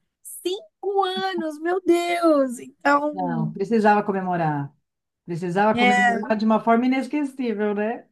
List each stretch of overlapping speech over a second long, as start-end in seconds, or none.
none